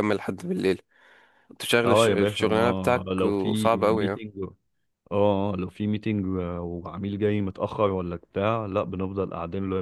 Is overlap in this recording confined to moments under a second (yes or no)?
no